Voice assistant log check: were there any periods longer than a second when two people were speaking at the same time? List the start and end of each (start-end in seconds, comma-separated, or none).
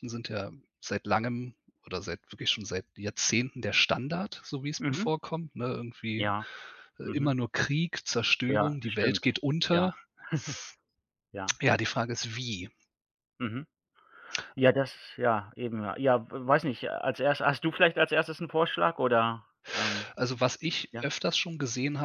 8.5-9.9